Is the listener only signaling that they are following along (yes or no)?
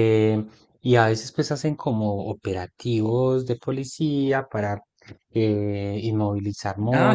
no